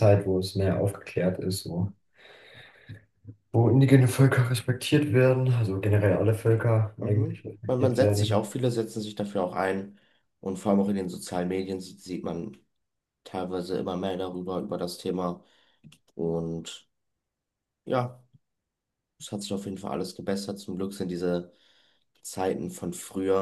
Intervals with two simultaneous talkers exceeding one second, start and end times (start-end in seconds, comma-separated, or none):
7.0-8.4